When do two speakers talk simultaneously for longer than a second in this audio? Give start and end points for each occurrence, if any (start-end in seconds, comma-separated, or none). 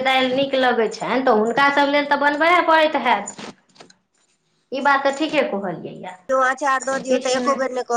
none